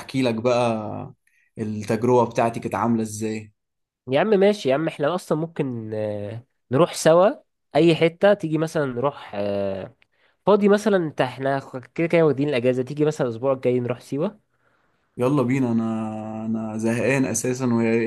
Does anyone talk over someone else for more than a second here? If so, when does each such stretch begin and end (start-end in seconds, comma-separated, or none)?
none